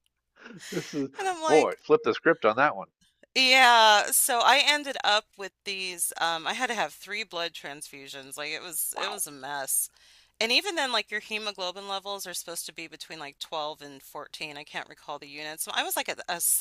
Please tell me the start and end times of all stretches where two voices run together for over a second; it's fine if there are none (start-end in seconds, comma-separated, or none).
none